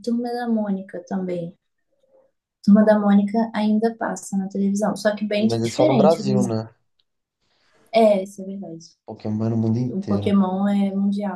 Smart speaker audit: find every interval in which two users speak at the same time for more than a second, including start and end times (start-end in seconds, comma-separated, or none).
5.4-6.6